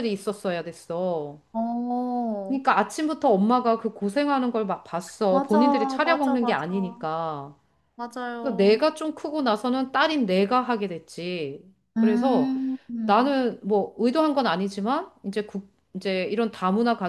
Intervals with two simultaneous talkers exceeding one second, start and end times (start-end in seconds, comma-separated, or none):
5.3-6.7